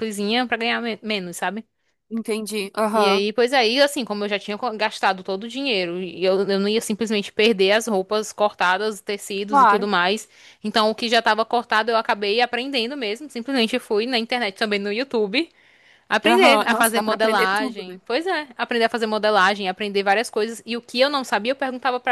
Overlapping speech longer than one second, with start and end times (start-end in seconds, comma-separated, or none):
16.3-18.0